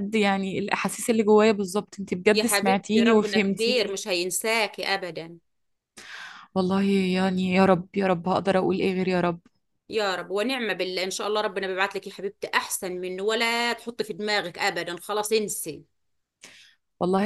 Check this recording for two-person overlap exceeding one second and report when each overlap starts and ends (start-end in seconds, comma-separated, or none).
2.3-4.0